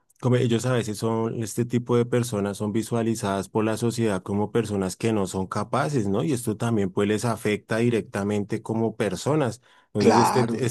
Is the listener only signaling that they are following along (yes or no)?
yes